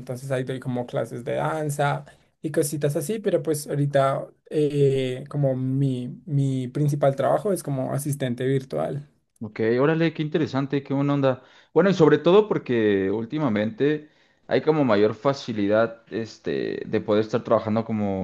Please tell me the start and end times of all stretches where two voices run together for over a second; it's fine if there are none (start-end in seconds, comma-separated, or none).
none